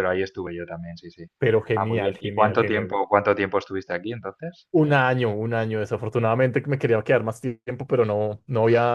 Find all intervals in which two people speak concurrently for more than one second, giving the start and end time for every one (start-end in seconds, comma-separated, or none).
1.7-3.0